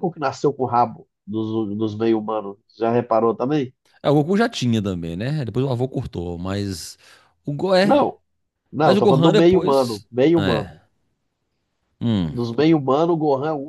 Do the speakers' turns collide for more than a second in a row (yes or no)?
yes